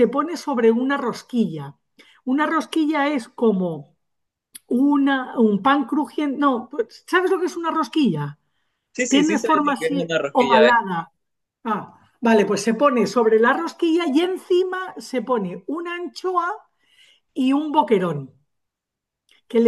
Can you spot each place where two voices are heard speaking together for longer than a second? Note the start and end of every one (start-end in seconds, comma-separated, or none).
9.1-10.6